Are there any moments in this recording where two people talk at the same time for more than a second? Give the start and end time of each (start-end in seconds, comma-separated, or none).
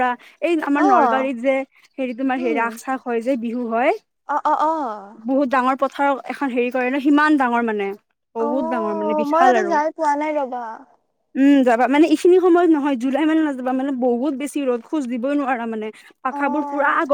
none